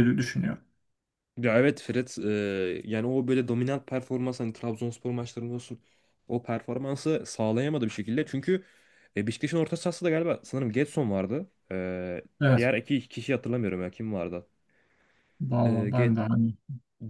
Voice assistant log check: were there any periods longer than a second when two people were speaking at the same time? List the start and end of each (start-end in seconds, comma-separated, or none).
none